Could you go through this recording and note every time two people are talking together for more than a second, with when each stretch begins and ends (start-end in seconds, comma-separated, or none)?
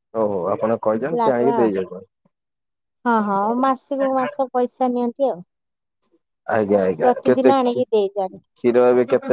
7.0-8.4